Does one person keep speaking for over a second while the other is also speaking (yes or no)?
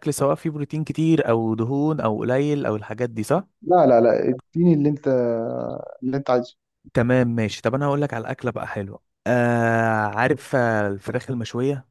no